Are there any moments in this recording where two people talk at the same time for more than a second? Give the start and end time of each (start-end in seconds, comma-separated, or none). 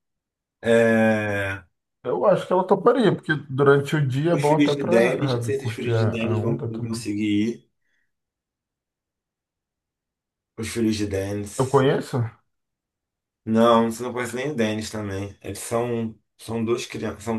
4.3-7.0